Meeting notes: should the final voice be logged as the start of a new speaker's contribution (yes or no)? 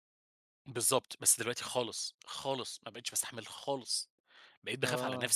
no